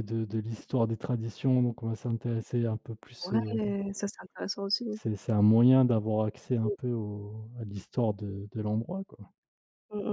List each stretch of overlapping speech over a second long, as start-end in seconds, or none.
none